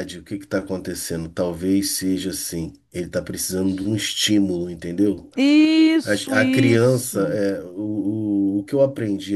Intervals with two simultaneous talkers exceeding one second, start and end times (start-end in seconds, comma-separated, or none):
6.0-7.4